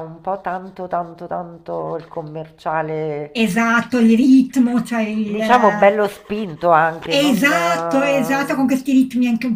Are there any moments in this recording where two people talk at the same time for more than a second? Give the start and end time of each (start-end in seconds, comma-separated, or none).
7.1-8.8